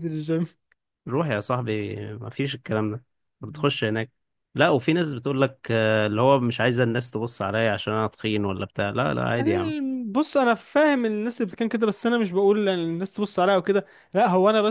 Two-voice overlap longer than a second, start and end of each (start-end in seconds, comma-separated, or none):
none